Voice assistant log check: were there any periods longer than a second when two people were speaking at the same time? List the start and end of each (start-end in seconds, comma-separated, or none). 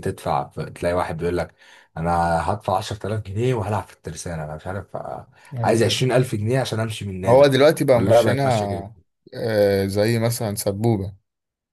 7.3-8.8